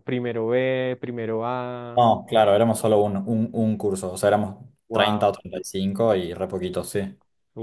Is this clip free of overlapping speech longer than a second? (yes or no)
yes